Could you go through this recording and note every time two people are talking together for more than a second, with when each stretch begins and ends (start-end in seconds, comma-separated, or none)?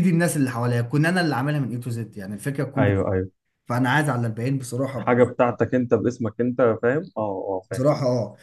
none